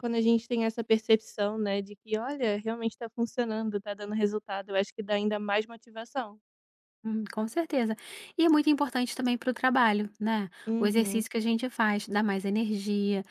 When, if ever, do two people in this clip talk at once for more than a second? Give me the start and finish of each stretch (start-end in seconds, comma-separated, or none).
none